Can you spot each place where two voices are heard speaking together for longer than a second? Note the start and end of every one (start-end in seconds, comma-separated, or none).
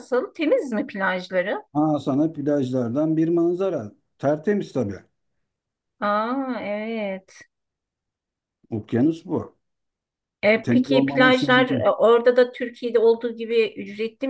10.6-12.0